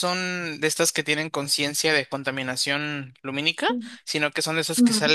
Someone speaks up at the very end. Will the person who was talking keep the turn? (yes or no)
yes